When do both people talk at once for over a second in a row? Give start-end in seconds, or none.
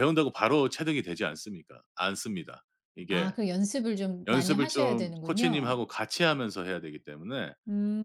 4.3-5.8